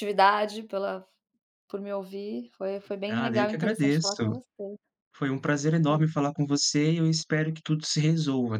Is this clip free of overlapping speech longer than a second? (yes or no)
no